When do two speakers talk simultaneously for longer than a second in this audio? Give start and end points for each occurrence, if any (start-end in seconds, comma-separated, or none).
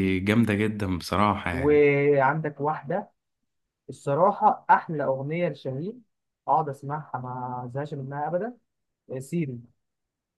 none